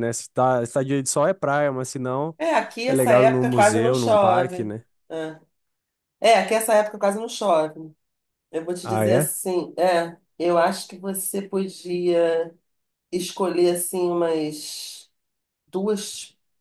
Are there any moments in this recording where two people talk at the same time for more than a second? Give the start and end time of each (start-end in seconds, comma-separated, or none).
2.9-4.7